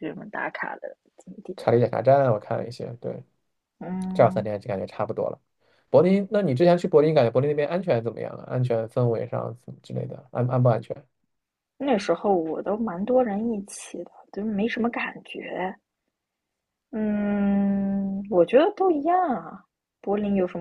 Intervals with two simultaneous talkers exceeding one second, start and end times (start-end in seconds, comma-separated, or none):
none